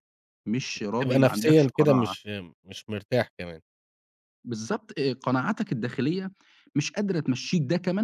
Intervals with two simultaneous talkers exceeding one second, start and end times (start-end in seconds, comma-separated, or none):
0.9-2.1